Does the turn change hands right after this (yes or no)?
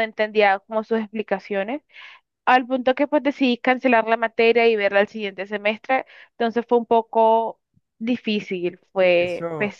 yes